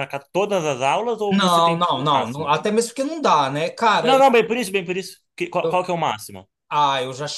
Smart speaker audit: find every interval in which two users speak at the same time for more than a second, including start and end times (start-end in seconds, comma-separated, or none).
1.3-2.5